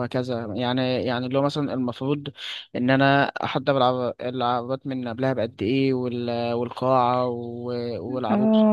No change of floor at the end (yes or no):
no